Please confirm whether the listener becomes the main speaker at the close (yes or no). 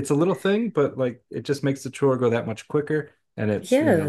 yes